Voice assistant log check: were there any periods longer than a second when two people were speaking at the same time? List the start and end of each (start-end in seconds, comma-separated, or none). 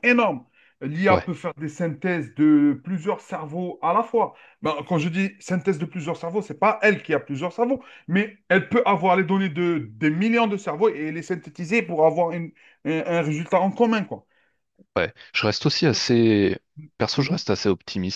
none